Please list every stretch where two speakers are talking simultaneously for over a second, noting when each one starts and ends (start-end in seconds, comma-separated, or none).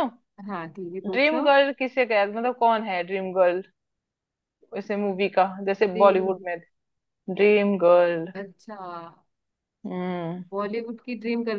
none